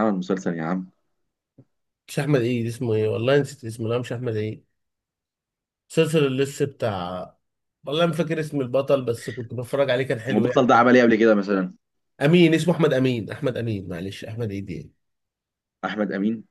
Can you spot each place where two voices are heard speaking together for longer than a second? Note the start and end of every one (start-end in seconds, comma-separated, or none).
none